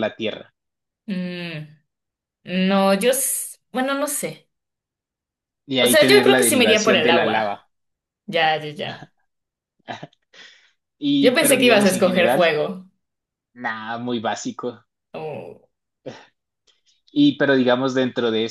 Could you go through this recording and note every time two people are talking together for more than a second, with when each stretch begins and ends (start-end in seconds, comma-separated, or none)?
5.8-7.6, 11.2-12.5